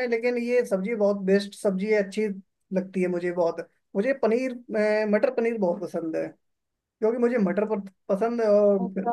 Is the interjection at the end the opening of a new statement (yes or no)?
no